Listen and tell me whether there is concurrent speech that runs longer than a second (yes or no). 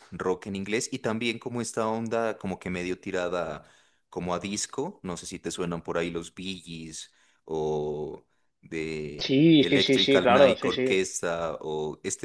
yes